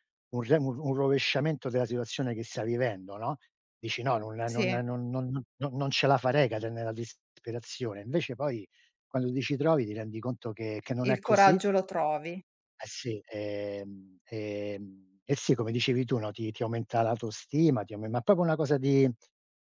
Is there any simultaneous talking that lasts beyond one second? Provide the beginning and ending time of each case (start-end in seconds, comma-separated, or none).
none